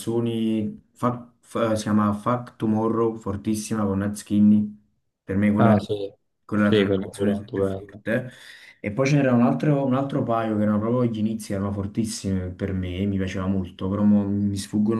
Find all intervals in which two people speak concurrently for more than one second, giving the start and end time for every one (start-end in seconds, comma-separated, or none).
6.6-8.0